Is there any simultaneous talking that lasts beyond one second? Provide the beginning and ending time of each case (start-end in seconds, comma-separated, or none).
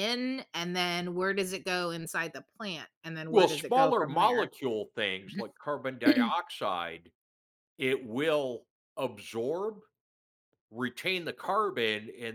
3.2-4.5